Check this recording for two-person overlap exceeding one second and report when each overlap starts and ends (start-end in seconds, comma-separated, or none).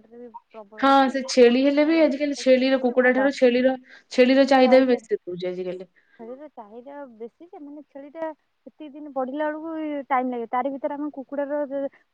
1.8-3.3